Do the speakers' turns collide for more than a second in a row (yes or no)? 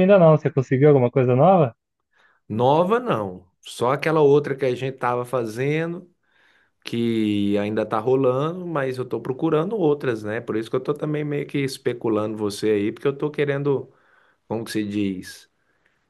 no